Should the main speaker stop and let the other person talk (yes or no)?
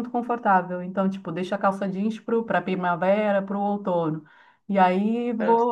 no